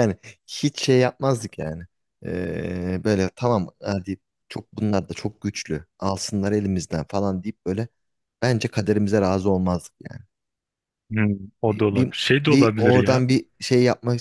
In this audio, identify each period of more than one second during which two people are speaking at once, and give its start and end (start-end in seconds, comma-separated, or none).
11.7-13.2